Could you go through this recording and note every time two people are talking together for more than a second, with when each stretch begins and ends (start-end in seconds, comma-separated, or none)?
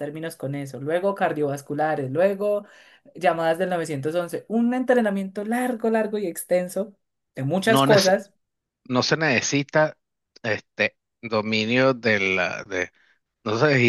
none